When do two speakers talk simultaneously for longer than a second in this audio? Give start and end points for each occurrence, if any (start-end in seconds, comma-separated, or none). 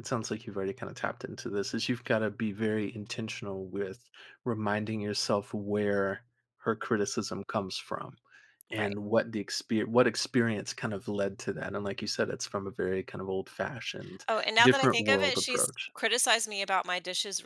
14.3-15.9